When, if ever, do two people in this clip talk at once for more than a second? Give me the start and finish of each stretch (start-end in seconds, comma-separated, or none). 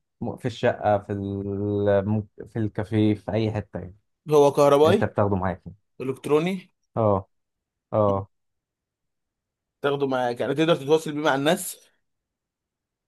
none